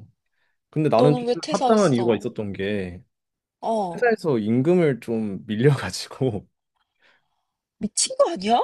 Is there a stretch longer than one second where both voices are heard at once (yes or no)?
yes